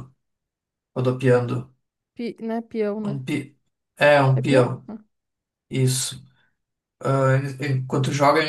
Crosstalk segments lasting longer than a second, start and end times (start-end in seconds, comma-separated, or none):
none